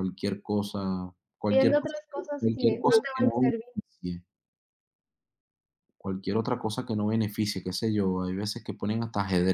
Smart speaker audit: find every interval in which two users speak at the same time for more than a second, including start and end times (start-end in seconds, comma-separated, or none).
1.5-3.7